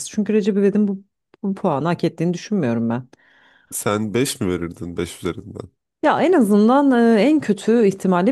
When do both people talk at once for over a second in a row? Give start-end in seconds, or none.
none